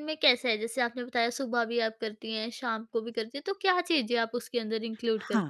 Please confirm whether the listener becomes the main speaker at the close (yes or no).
yes